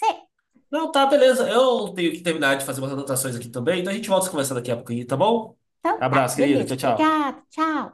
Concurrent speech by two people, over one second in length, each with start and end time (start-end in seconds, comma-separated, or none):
6.0-7.2